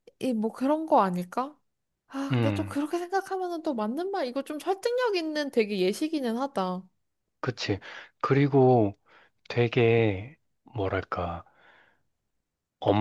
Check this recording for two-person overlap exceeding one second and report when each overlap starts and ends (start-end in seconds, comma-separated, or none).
none